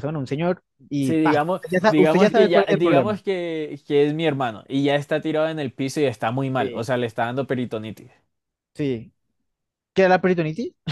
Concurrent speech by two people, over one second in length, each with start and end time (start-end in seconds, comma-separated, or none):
1.0-3.2